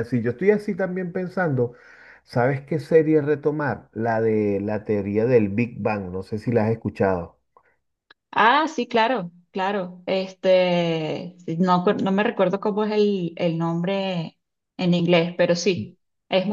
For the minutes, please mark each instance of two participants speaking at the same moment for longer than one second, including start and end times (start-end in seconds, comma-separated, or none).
none